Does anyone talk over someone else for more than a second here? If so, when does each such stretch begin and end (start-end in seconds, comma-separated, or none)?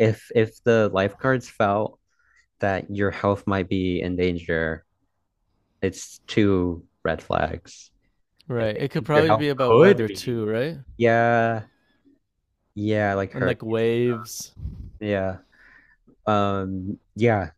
8.6-10.4